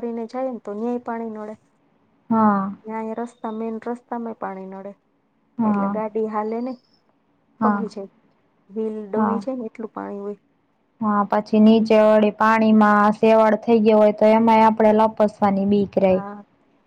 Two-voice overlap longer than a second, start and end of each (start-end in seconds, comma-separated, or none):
none